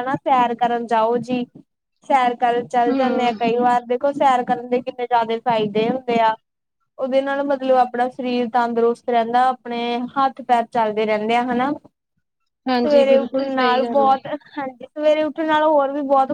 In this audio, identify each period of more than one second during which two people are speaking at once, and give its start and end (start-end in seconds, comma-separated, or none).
12.8-14.1